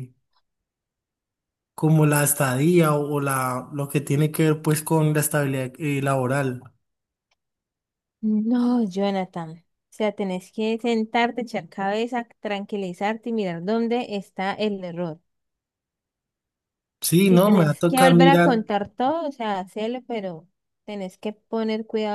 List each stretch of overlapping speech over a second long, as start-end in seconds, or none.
17.2-18.5